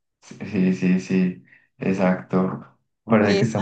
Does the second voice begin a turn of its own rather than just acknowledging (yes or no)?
no